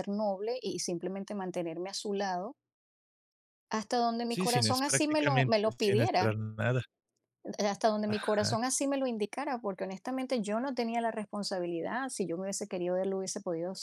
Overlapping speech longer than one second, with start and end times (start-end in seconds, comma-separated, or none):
4.3-6.4